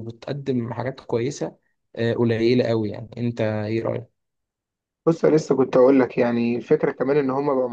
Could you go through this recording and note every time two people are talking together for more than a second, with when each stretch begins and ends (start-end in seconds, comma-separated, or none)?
none